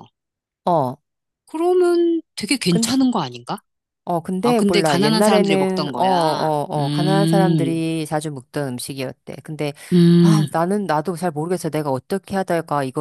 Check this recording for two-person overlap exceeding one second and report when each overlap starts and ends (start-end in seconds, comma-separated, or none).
4.4-7.8